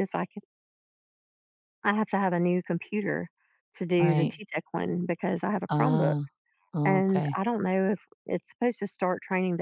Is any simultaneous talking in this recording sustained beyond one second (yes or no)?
no